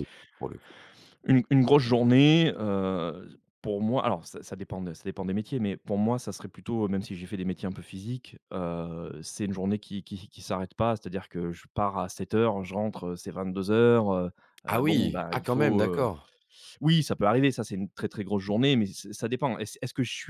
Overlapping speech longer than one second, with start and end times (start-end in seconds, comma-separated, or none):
14.7-16.1